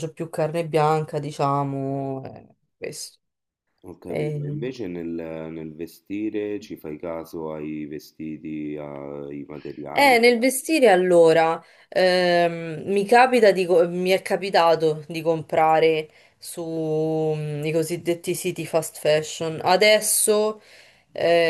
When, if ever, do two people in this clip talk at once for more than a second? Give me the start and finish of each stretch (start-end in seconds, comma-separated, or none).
none